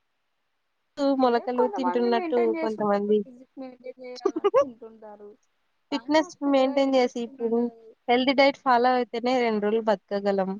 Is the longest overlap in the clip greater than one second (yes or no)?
yes